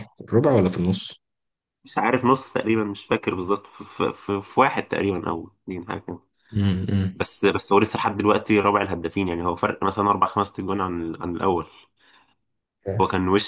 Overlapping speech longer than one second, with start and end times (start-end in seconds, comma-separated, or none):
none